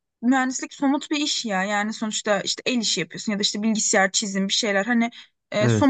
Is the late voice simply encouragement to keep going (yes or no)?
yes